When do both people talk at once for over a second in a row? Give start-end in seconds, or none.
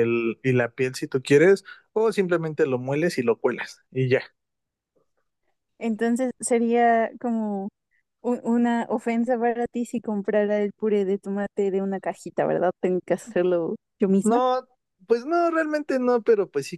none